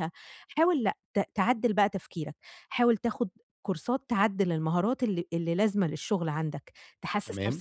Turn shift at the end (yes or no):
no